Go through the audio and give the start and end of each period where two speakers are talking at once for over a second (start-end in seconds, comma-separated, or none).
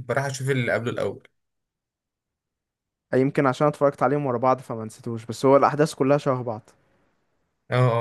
none